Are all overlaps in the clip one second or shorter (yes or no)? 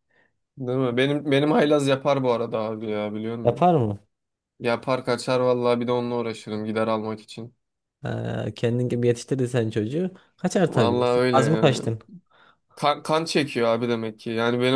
no